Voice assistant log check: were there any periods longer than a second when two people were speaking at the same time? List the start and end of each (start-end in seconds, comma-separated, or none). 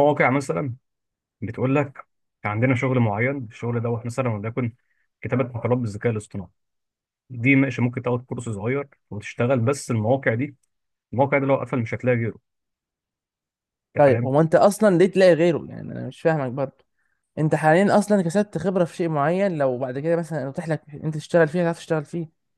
none